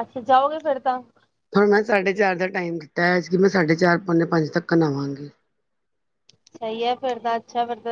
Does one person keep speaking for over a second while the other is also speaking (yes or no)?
no